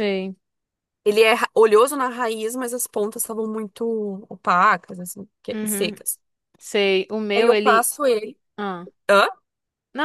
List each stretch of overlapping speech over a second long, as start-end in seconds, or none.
none